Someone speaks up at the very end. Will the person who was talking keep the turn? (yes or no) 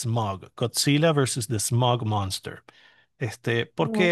yes